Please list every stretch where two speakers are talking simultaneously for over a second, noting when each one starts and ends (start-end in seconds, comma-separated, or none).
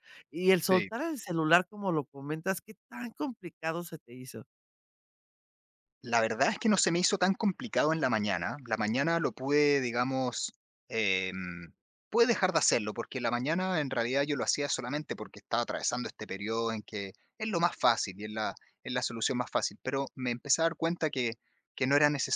none